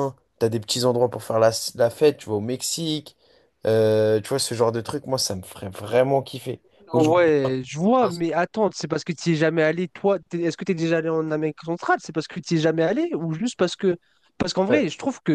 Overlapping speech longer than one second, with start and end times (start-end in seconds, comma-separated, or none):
none